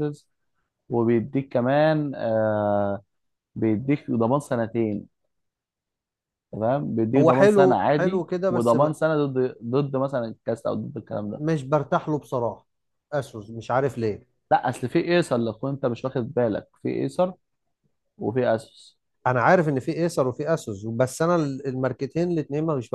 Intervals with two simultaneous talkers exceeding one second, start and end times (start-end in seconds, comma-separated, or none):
7.2-8.9